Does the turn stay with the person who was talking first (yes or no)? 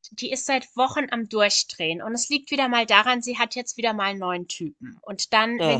yes